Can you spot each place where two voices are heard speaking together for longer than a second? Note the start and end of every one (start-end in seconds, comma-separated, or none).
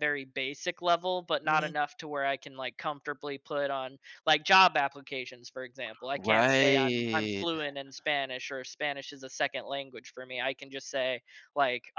6.1-7.5